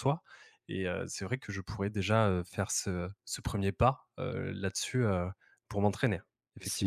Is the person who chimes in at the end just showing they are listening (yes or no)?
no